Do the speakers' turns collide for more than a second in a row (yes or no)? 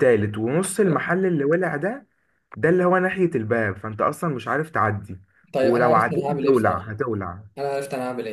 yes